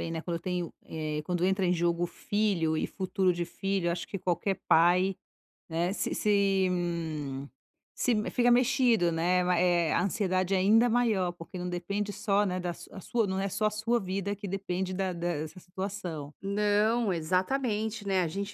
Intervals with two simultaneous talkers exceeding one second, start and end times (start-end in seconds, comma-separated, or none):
none